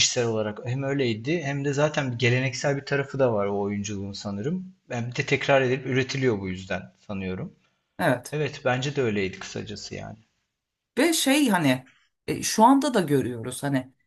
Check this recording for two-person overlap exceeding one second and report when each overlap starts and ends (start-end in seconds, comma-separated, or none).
none